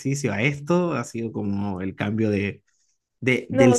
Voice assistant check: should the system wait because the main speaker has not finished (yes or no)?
yes